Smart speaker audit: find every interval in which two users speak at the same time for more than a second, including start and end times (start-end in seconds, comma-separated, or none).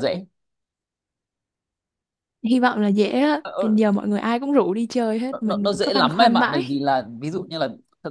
5.3-6.6